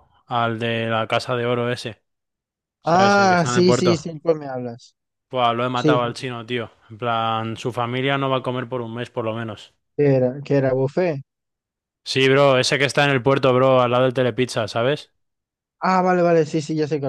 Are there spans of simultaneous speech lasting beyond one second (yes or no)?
yes